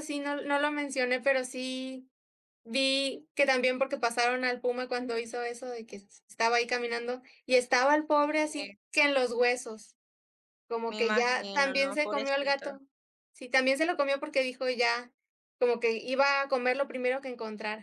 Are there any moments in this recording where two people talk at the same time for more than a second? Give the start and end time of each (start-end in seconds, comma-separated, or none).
10.9-12.7